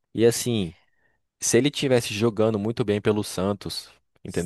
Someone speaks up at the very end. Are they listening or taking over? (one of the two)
taking over